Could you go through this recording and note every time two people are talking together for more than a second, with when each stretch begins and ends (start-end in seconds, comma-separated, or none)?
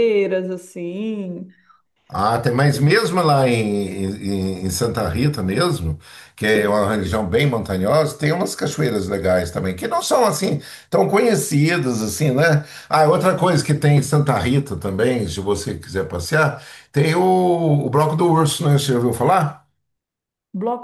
none